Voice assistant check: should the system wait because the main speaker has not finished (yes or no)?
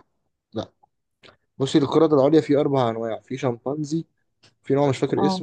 yes